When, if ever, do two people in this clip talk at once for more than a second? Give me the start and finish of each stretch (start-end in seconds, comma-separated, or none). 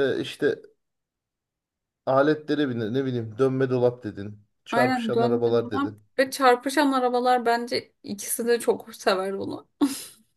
4.7-6.0